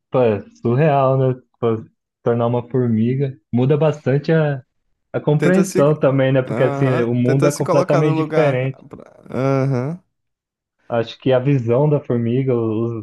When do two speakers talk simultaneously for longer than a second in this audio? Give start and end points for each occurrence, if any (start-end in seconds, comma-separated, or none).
6.5-8.8